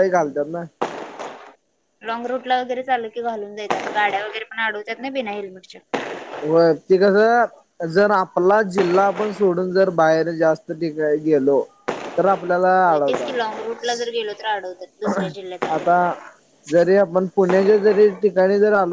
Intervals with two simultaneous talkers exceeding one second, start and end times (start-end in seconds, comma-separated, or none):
none